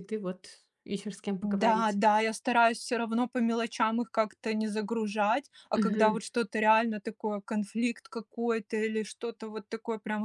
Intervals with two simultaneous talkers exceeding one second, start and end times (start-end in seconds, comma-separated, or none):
none